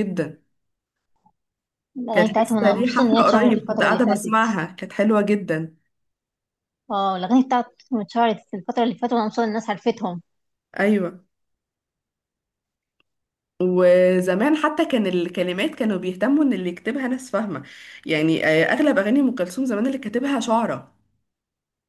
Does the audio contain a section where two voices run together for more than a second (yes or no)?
yes